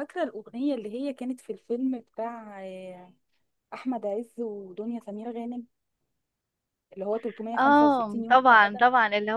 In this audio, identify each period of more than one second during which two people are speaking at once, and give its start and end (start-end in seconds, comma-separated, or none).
7.6-8.8